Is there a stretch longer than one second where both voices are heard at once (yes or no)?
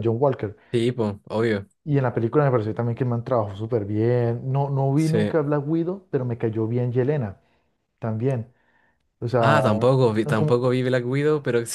yes